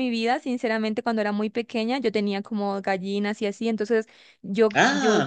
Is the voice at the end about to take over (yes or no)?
no